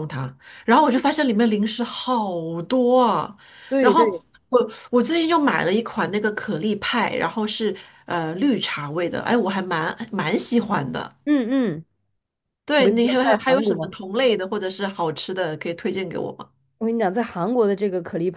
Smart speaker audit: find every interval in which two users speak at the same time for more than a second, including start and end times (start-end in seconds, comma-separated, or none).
12.7-14.0